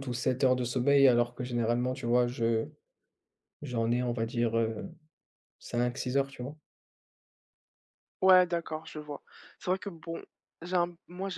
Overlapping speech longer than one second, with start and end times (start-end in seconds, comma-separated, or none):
none